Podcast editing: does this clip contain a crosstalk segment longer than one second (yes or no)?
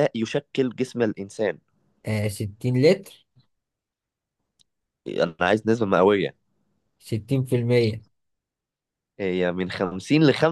no